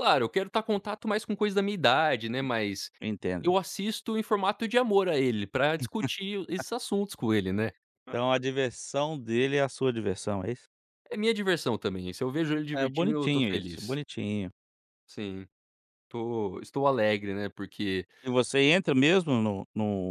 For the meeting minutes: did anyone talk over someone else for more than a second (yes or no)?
yes